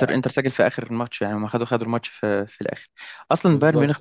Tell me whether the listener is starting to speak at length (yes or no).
no